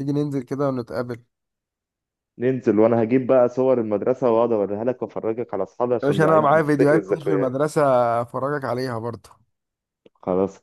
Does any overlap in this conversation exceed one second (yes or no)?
yes